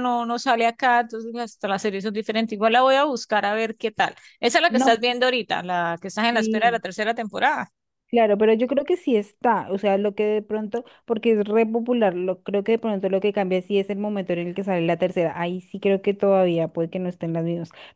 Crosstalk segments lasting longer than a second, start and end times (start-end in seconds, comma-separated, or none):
none